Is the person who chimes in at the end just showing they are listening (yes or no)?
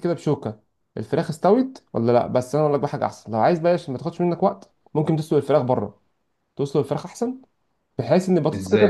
yes